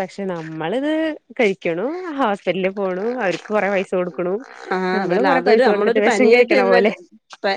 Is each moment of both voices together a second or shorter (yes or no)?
no